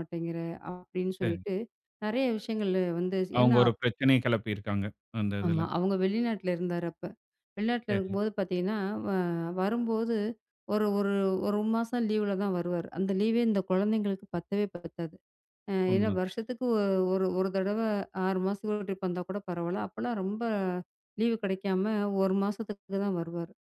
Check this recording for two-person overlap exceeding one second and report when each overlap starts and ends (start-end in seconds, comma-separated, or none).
none